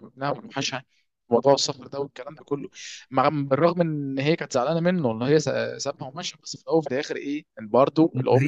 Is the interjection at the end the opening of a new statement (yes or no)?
yes